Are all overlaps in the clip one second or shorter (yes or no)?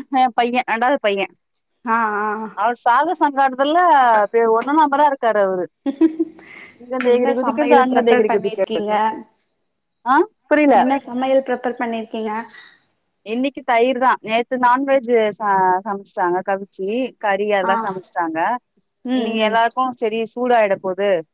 no